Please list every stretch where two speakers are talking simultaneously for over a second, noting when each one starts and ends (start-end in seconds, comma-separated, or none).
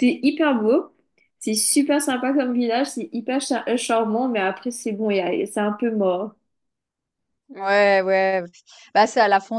none